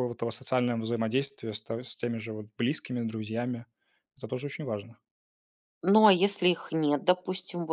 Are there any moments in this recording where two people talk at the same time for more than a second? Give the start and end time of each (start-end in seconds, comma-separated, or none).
none